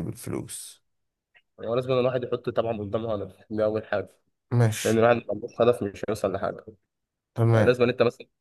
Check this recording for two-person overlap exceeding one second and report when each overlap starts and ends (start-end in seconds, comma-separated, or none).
none